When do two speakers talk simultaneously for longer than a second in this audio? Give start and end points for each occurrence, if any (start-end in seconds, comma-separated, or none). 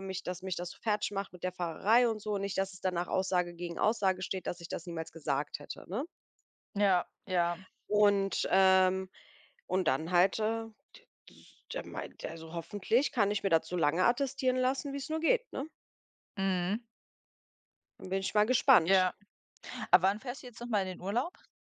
none